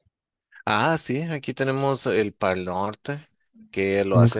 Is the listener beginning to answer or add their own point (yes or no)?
no